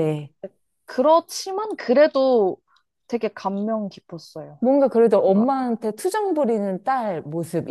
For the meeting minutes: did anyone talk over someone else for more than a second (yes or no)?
no